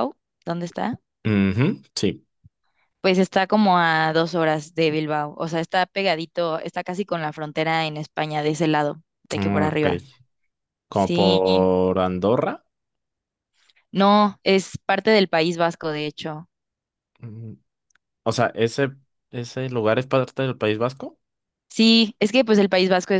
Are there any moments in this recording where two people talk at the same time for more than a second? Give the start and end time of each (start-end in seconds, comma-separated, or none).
none